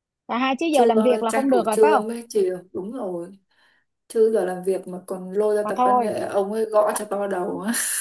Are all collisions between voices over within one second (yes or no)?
no